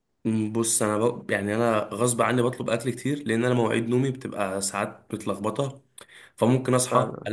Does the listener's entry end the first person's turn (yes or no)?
no